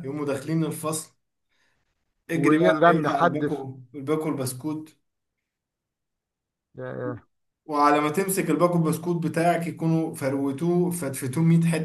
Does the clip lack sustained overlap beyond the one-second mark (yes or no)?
no